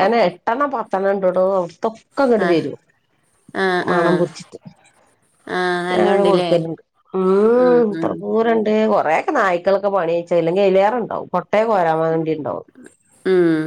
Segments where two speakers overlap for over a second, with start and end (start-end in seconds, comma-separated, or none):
none